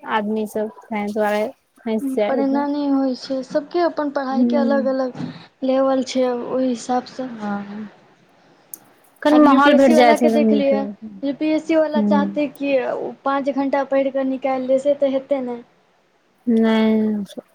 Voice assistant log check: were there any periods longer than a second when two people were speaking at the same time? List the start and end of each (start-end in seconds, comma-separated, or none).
9.3-10.8